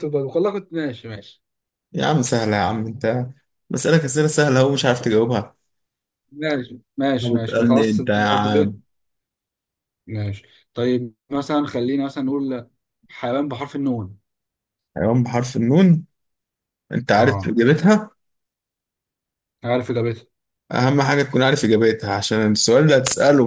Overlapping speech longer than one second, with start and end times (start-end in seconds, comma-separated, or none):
7.2-8.8